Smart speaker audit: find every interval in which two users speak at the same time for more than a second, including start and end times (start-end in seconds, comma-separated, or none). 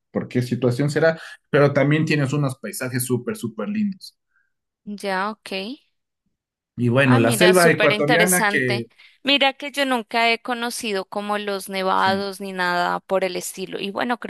7.0-8.9